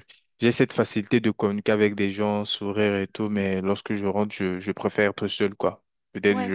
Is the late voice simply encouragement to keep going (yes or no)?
yes